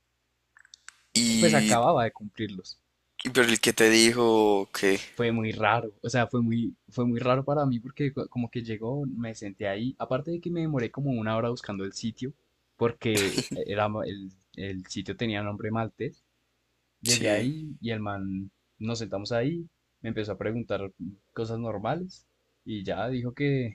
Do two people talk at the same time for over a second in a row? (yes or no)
no